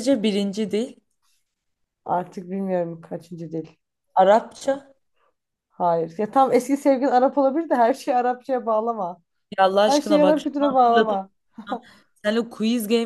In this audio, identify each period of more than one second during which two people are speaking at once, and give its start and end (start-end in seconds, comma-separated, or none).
9.9-11.2